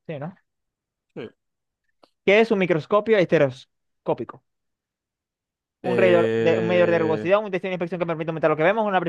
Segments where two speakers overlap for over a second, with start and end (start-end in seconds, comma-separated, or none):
5.8-7.3